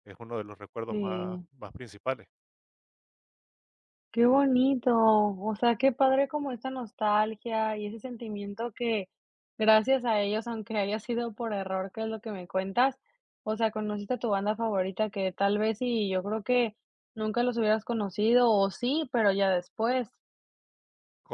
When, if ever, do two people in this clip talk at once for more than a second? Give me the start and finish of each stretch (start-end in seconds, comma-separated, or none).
none